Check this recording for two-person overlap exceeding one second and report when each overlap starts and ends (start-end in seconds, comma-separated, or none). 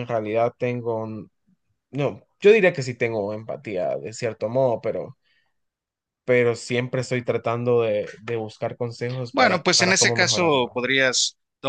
9.3-10.8